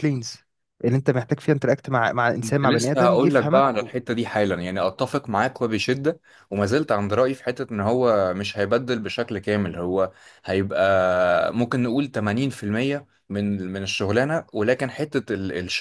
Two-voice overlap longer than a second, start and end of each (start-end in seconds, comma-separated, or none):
2.4-3.9